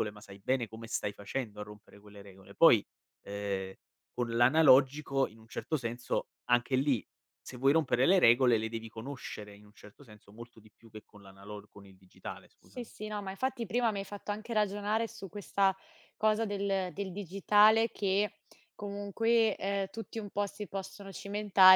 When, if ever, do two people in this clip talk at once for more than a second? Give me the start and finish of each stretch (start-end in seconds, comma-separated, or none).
none